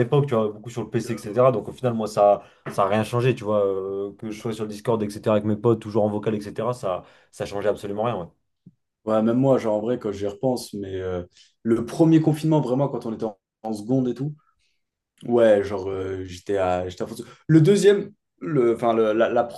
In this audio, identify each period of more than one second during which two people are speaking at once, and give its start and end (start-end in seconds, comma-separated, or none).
none